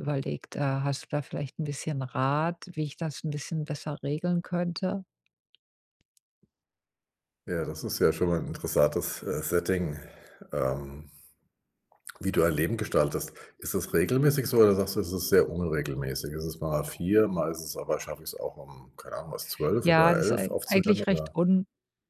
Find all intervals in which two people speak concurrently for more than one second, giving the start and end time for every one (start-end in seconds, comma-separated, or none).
19.8-21.3